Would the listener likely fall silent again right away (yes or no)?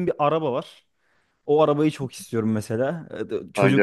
yes